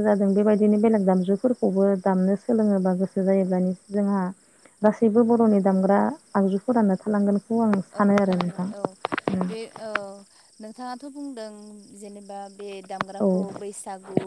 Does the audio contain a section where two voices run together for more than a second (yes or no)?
no